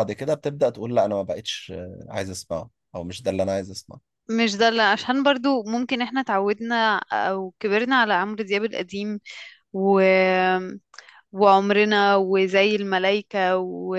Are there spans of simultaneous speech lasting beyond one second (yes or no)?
no